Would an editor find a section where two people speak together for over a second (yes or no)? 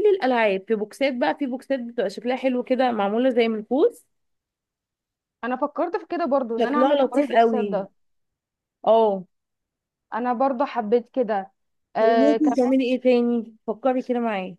yes